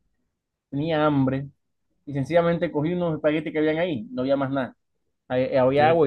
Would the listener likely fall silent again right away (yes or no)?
yes